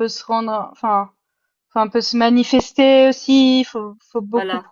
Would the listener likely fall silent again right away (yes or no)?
yes